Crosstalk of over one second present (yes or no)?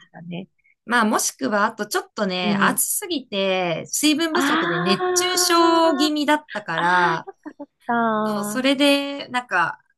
yes